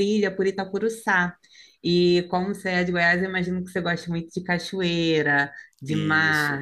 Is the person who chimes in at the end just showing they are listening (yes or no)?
yes